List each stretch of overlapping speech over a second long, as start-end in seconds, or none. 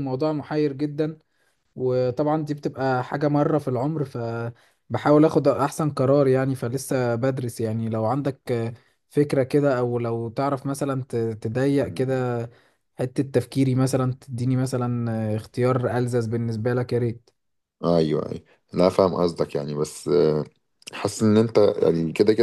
none